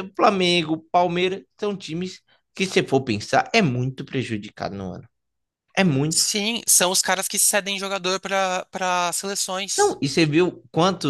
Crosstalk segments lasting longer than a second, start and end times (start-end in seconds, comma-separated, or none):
none